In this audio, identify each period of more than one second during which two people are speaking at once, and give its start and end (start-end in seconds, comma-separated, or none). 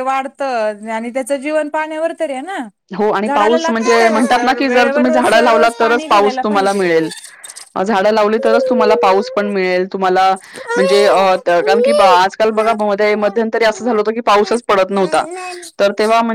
3.3-6.8